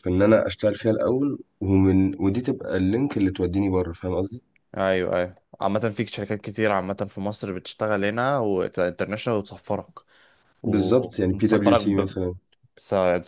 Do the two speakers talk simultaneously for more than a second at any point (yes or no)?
yes